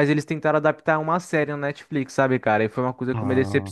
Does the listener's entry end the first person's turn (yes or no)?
no